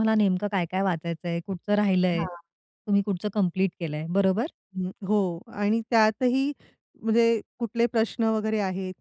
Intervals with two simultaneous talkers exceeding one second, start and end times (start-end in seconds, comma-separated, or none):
none